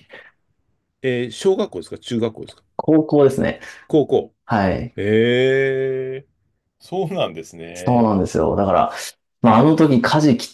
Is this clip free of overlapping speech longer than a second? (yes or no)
yes